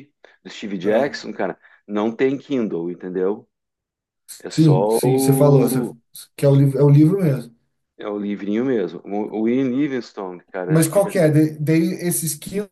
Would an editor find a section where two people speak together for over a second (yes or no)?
yes